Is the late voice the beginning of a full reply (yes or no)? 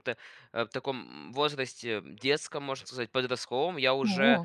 no